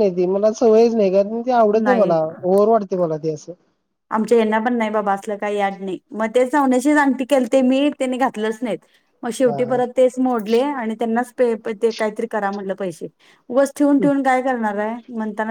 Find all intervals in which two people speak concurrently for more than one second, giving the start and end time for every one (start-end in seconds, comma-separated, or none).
none